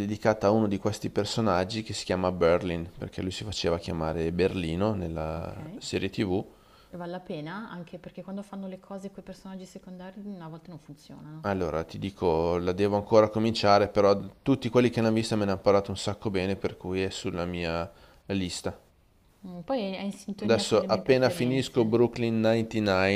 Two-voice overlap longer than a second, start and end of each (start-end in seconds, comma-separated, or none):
20.4-21.9